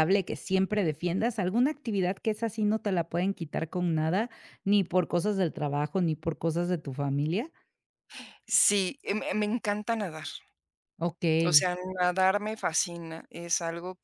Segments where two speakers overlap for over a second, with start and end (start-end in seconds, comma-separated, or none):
none